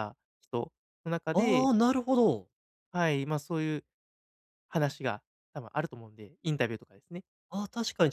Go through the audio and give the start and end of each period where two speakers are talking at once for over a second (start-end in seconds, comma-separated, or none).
none